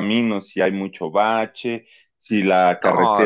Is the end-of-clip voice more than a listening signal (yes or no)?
no